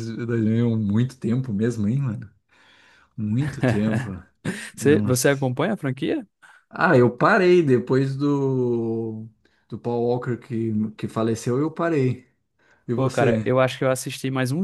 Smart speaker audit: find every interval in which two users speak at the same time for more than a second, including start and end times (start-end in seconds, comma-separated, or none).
none